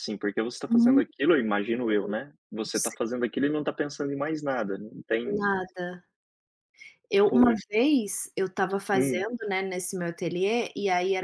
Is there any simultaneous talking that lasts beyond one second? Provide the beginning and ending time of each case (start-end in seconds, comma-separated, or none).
none